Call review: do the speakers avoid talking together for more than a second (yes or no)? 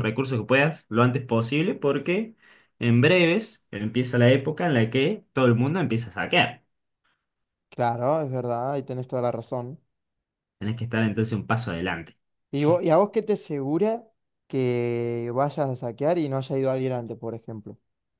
yes